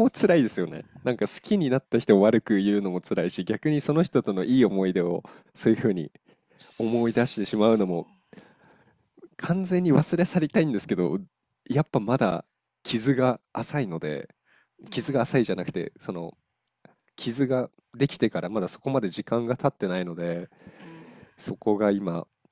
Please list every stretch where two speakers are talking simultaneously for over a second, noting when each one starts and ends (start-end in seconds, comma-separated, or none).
6.8-8.1